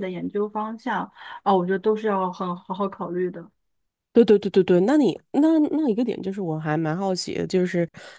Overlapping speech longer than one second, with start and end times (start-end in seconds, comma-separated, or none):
none